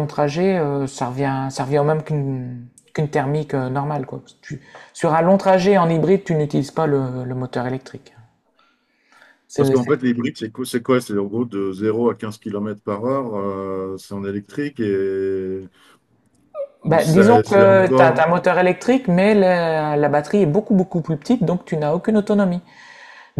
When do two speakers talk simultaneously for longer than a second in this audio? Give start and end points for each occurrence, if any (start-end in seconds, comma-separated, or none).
16.9-18.3